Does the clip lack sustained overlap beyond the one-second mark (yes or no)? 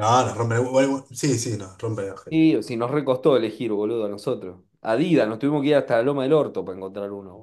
yes